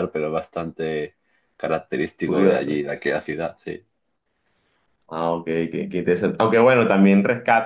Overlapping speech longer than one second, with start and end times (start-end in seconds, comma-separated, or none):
none